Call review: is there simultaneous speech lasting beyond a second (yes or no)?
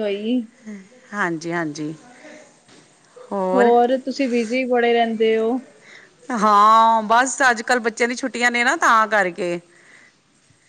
no